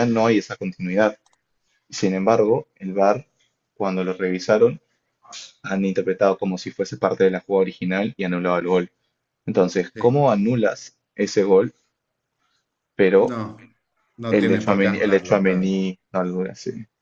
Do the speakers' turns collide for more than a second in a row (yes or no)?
yes